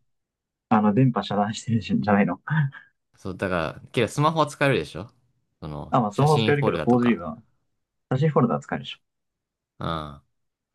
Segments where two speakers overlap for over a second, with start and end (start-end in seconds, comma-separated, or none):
5.9-7.2